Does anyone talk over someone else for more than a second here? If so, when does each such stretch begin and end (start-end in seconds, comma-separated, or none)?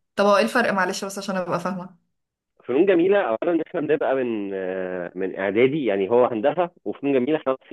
none